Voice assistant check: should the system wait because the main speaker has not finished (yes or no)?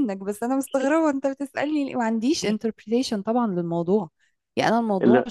yes